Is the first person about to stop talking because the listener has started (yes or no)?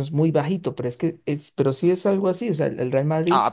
yes